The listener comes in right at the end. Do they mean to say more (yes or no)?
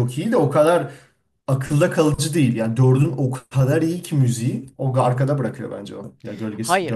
yes